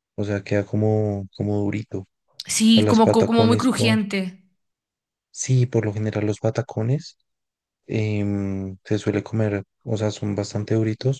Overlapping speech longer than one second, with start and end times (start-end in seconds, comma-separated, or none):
2.7-3.9